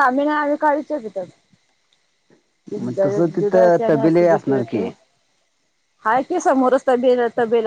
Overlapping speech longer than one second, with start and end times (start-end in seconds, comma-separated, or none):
3.4-4.8